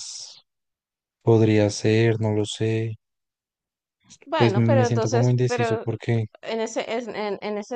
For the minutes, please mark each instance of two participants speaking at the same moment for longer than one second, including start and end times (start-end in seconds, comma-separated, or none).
4.4-5.8